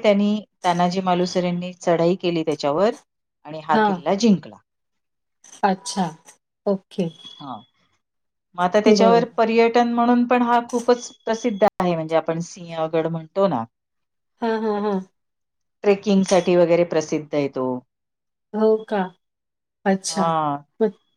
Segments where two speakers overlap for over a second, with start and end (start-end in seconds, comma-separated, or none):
none